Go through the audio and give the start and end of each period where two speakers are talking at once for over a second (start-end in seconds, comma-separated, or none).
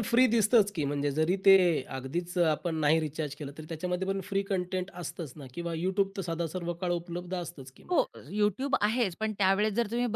none